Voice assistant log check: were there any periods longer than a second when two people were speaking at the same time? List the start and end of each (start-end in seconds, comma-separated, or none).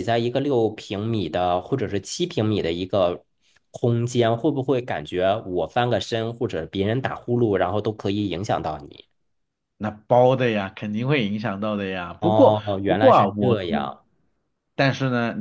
12.2-13.9